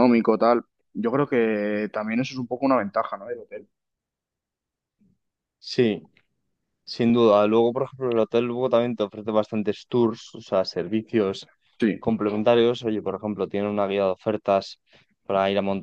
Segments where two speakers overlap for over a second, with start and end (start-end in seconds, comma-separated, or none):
none